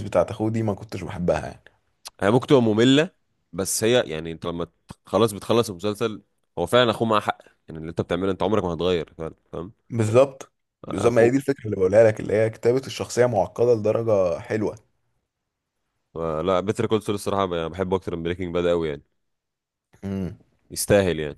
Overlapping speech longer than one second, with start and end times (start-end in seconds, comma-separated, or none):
none